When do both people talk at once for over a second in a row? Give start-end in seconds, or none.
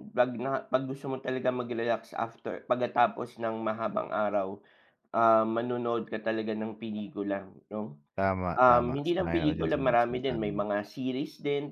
8.6-10.6